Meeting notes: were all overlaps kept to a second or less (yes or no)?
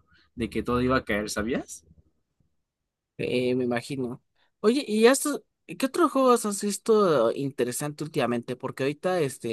yes